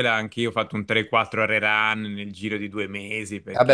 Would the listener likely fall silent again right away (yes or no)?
no